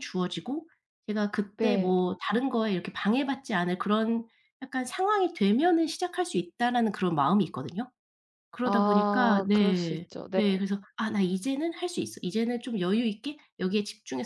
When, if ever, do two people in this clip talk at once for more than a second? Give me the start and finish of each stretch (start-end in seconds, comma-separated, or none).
8.6-10.4